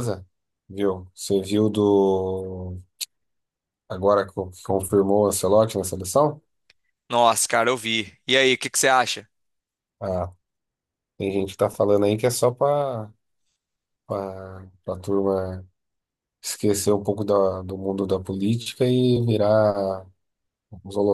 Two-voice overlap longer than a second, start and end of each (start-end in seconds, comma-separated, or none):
none